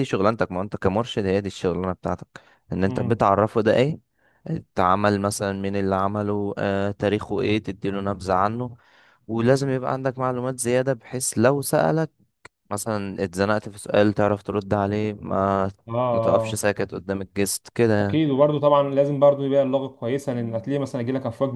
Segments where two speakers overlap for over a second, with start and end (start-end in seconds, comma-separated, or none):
none